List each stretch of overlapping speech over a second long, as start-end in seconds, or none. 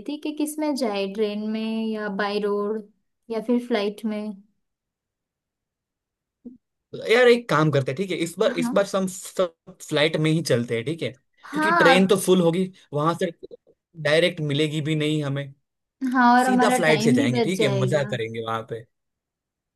16.4-18.1